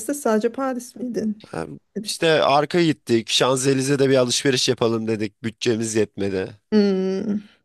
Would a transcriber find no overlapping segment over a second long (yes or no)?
yes